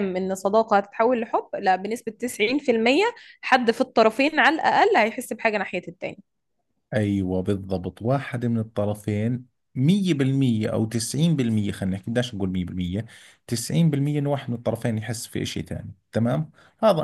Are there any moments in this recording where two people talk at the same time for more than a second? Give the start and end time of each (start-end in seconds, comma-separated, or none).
none